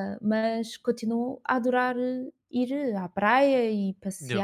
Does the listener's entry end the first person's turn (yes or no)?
no